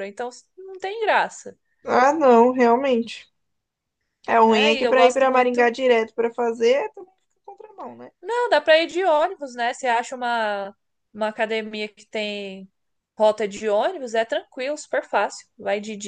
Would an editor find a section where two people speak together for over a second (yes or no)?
yes